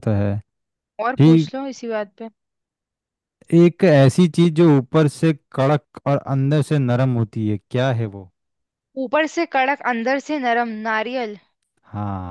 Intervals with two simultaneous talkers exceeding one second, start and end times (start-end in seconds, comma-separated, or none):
none